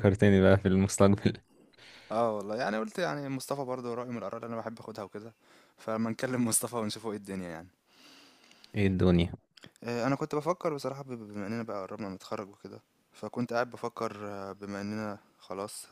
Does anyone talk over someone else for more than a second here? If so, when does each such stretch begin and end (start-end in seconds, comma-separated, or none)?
none